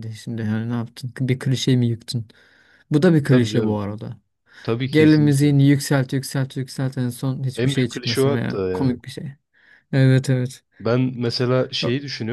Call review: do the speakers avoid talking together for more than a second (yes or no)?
no